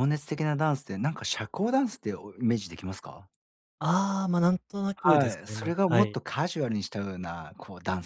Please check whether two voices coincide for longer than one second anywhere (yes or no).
yes